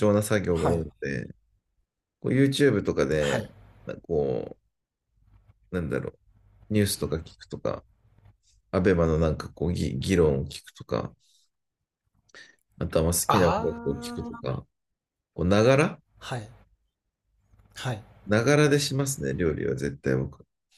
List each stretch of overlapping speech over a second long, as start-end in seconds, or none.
13.3-14.6